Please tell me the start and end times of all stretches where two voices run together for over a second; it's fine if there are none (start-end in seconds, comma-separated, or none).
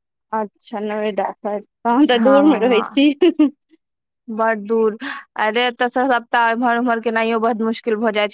none